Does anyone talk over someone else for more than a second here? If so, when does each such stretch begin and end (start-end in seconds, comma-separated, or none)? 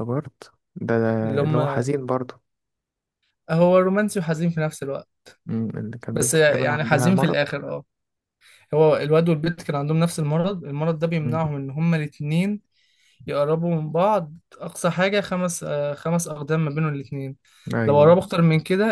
6.1-7.4